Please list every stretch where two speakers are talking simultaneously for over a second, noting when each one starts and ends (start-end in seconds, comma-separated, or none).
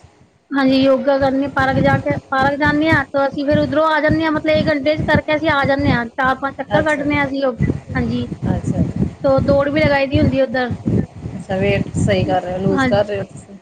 none